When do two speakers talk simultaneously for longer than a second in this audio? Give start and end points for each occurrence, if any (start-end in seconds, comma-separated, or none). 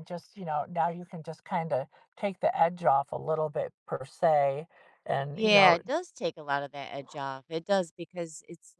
none